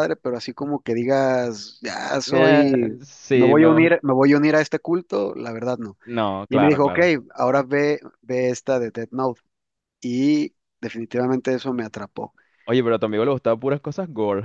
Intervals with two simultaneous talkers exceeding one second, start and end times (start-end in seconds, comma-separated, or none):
2.3-4.0